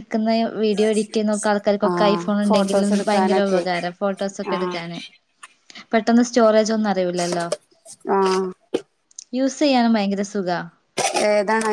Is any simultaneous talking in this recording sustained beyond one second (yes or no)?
yes